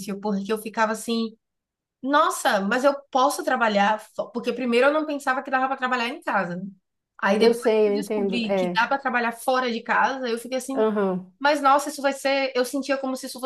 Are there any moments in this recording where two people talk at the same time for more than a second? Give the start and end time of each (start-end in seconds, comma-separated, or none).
7.4-8.8